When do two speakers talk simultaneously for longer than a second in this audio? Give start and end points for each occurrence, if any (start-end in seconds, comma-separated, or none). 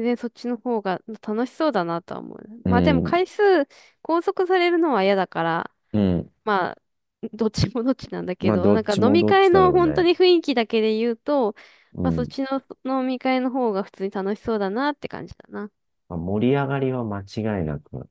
8.4-10.1